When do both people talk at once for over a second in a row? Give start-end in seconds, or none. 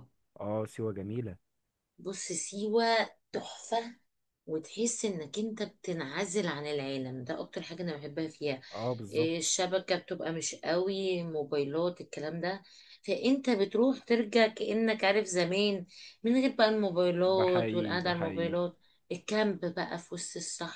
17.2-18.5